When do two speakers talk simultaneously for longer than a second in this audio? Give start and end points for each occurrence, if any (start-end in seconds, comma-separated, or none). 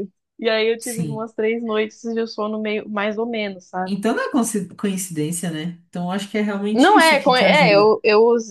6.7-7.9